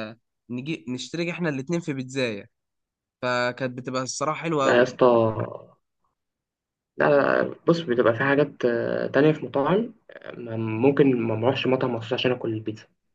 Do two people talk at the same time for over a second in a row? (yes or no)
no